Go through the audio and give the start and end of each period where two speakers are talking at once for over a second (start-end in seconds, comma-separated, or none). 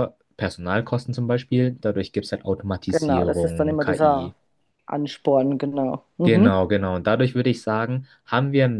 2.9-4.3